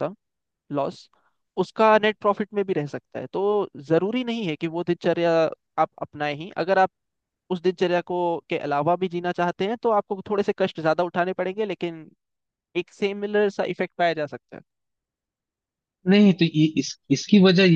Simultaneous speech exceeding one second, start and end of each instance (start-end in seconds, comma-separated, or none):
none